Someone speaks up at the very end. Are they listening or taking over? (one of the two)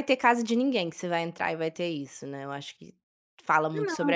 listening